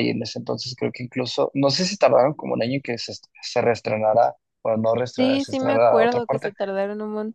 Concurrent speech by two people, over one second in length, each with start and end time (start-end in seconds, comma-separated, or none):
5.2-6.5